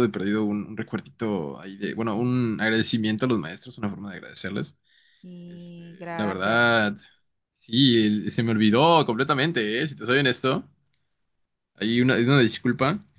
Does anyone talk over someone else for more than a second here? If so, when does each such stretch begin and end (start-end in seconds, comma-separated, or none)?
5.5-6.8